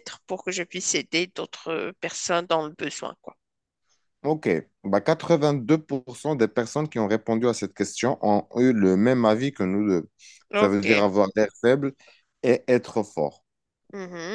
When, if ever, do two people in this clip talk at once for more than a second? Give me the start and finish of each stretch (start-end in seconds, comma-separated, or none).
none